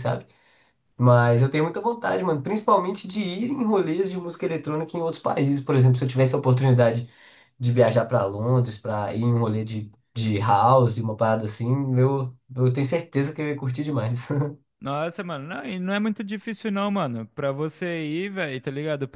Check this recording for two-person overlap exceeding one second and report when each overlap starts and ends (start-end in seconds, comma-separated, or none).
none